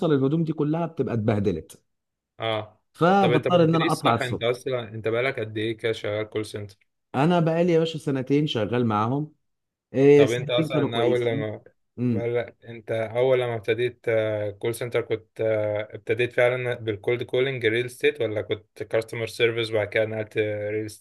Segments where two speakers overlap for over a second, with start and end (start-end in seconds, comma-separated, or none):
3.2-4.6, 10.1-11.5